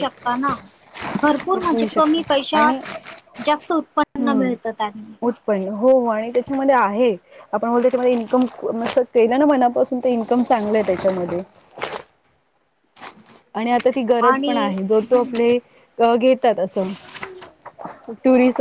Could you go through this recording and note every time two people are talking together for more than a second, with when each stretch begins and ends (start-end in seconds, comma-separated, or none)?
1.5-2.8